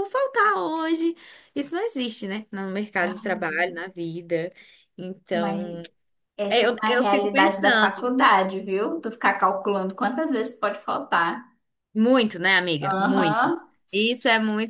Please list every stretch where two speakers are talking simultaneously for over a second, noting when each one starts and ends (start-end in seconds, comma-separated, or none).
6.5-8.1